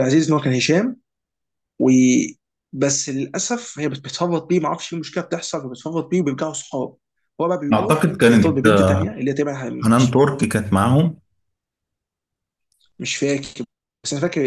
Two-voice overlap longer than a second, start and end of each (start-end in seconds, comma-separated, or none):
7.7-9.1